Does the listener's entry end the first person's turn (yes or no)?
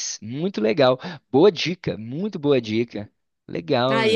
yes